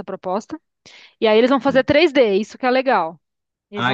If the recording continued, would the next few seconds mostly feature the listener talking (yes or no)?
yes